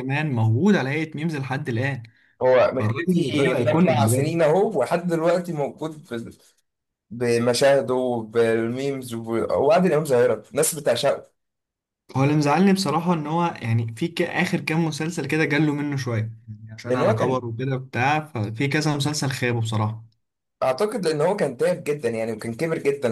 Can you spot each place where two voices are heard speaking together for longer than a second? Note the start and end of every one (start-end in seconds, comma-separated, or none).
2.8-4.4